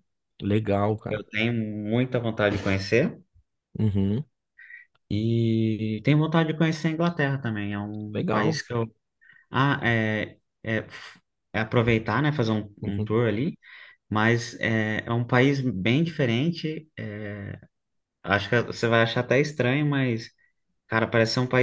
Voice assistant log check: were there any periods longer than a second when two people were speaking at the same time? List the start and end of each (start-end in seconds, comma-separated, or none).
none